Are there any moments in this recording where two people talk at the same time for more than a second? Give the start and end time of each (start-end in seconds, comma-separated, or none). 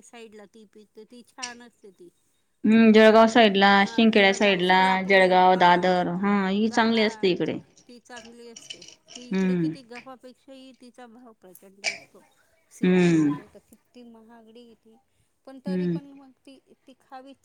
2.8-5.7